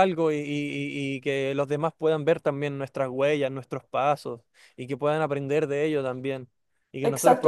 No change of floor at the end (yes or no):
no